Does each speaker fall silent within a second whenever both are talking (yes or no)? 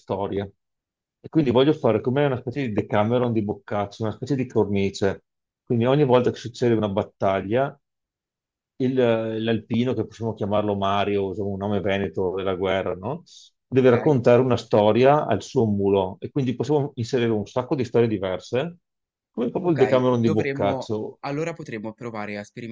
no